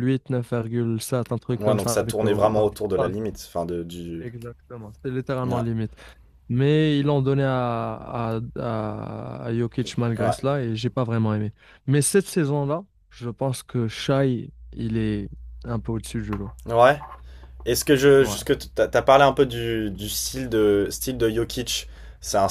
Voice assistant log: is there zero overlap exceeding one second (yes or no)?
no